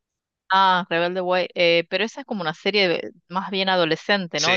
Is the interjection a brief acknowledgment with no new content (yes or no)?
no